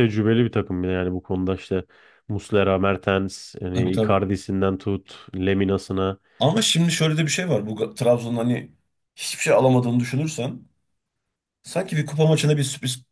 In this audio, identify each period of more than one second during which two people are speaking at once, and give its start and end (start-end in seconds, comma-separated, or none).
none